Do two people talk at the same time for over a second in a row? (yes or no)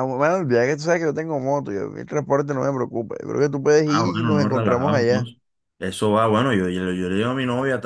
yes